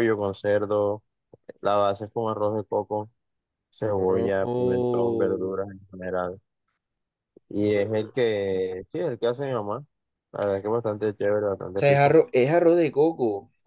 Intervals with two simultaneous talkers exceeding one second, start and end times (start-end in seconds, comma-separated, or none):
3.9-5.6